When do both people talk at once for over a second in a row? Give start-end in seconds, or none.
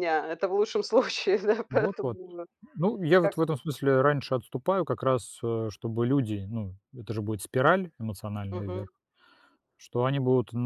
none